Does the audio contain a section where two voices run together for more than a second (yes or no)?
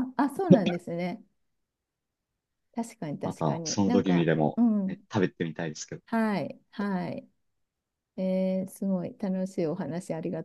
yes